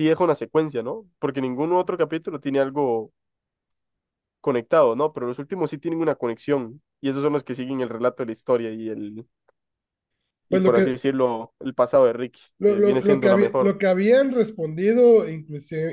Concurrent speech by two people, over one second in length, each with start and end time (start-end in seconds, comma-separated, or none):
12.6-13.8